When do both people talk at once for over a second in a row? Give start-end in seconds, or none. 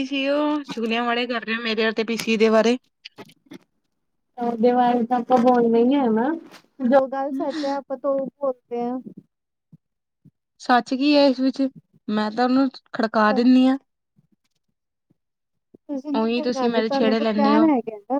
16.2-17.6